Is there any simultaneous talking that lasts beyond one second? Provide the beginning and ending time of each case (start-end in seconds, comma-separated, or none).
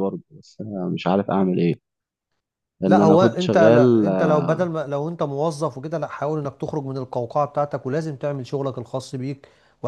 2.8-4.1